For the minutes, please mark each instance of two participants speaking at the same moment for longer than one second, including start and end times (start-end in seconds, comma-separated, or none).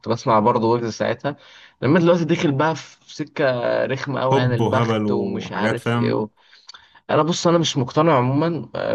4.3-6.3